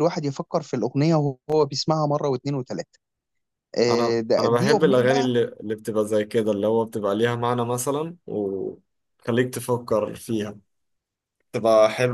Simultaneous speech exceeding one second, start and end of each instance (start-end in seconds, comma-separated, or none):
3.9-5.3